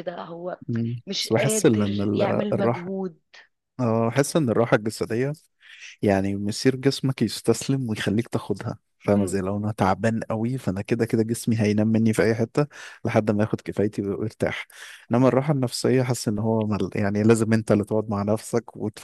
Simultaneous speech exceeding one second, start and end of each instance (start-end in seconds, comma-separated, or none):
1.1-2.9